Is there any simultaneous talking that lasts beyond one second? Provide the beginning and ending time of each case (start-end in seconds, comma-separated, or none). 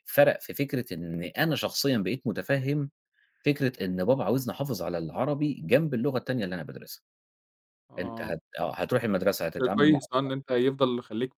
none